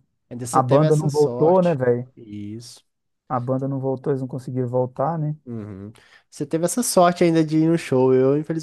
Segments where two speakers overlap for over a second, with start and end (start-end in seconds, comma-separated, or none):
0.5-1.8